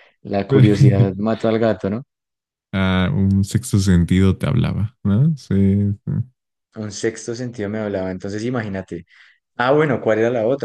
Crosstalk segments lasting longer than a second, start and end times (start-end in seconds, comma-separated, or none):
none